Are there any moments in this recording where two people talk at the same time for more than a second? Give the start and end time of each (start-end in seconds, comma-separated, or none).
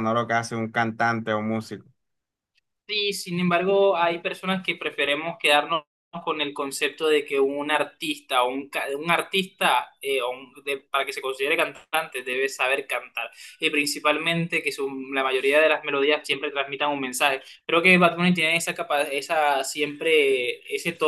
none